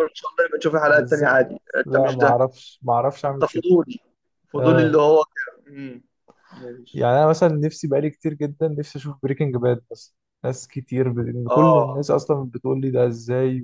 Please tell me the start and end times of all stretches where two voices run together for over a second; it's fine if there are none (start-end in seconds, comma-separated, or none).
0.8-2.4